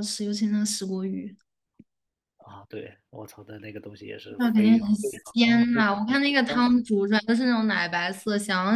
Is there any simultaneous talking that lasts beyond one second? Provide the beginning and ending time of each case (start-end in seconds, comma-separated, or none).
4.4-6.7